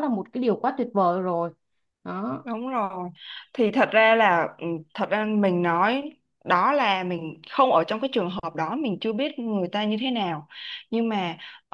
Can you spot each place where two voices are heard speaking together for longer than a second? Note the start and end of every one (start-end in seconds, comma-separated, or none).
none